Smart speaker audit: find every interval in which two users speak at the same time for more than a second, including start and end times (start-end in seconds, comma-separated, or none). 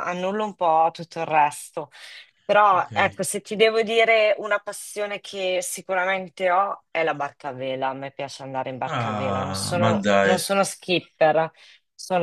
8.8-10.4